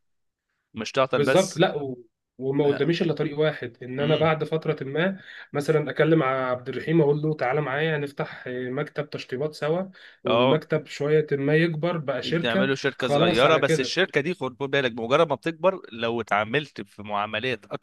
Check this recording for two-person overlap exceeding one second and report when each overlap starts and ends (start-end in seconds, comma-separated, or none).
12.4-14.0